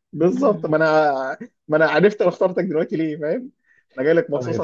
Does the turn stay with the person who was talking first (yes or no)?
no